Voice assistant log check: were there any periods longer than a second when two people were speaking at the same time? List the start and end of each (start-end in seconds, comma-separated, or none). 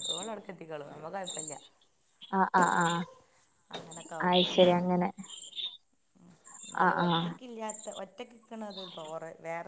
none